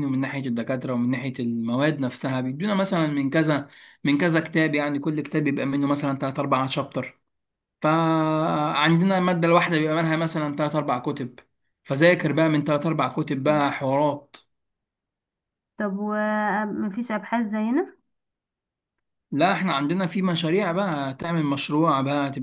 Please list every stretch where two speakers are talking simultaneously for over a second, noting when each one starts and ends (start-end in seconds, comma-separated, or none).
none